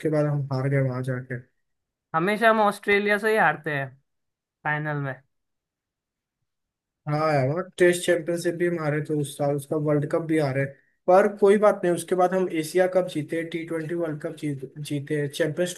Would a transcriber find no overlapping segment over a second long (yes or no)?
yes